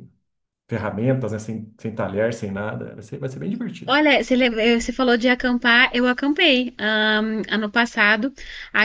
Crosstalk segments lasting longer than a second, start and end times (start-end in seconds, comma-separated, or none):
none